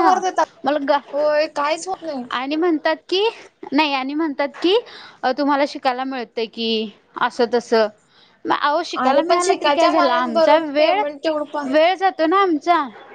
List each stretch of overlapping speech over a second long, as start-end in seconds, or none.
9.0-11.0